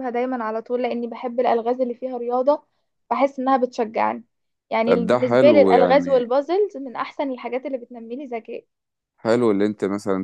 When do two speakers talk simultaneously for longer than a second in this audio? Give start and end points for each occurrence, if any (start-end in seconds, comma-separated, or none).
4.8-6.3